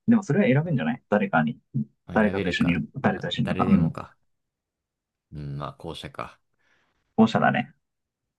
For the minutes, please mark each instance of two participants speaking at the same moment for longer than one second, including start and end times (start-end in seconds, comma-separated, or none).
2.1-4.0